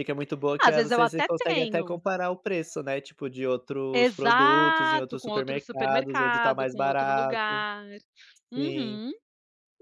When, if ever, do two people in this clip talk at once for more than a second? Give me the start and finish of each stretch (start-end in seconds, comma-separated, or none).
0.6-2.0, 3.9-7.6